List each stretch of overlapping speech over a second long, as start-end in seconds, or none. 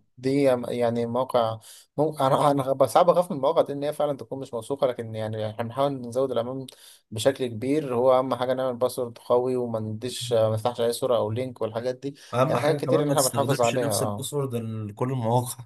12.3-14.3